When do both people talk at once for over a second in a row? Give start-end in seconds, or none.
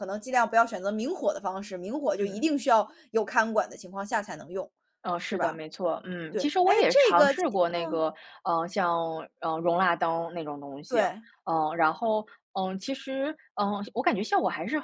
6.3-8.1